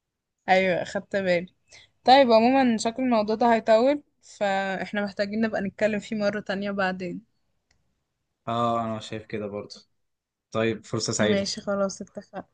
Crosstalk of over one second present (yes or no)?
no